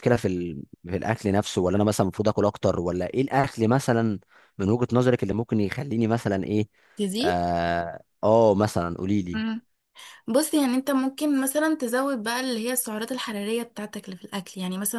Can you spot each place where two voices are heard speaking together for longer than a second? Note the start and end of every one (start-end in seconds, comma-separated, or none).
none